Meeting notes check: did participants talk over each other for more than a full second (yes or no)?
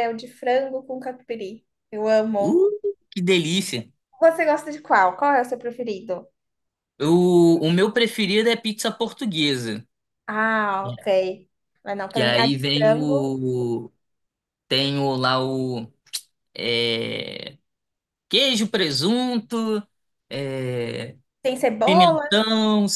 yes